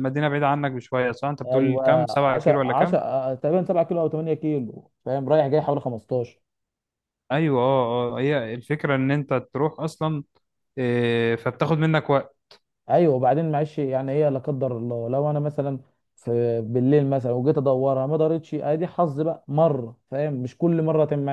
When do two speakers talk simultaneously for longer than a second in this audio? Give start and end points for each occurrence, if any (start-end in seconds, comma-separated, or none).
1.5-3.0